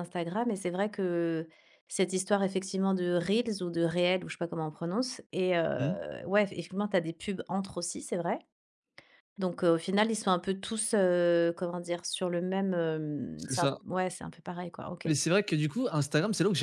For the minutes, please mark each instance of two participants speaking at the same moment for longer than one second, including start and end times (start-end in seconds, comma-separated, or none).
none